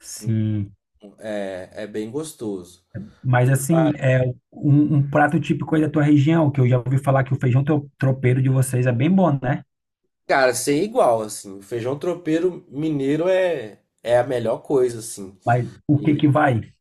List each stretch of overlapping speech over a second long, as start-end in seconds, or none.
none